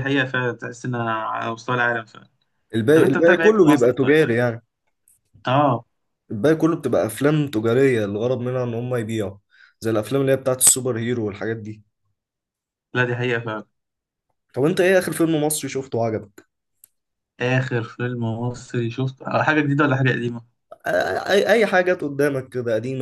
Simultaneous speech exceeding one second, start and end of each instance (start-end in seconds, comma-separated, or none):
3.0-4.2